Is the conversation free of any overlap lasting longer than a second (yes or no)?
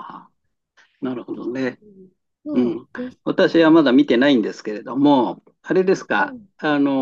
yes